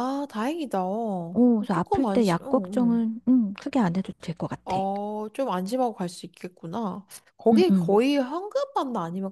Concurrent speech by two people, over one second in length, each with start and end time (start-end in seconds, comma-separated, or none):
1.7-3.0